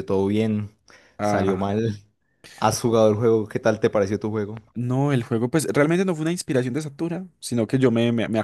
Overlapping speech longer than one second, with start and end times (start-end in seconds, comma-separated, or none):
none